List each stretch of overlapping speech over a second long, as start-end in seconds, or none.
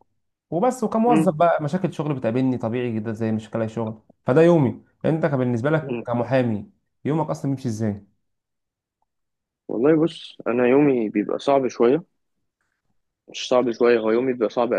none